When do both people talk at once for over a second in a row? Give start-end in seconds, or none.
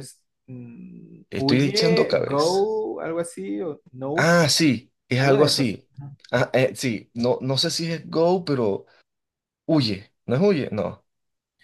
1.3-2.7